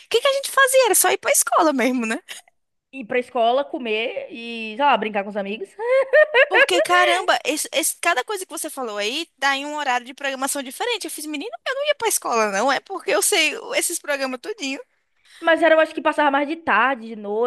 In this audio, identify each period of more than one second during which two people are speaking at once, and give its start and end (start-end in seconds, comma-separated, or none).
none